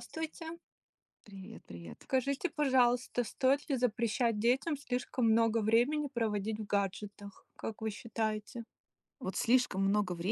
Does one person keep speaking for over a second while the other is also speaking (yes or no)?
no